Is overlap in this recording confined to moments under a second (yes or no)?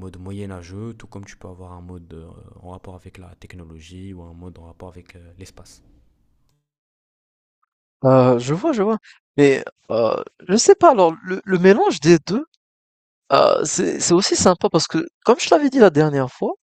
yes